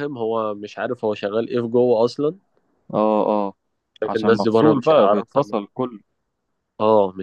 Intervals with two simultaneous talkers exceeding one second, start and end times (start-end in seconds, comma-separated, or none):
4.1-5.4